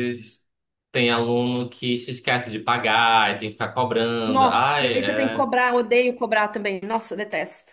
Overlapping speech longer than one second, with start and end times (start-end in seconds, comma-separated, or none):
4.3-5.5